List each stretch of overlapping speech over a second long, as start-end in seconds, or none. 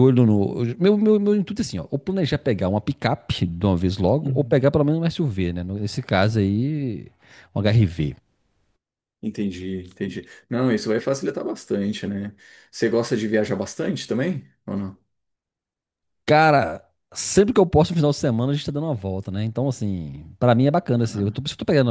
none